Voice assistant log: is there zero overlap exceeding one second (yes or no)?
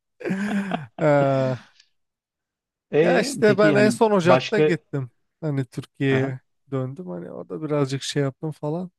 no